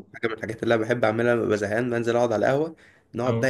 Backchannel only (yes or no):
yes